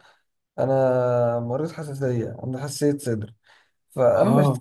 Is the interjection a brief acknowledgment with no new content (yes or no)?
yes